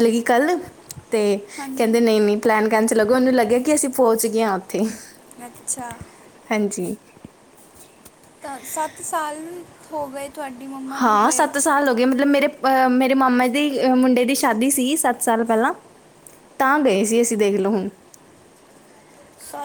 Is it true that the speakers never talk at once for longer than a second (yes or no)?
yes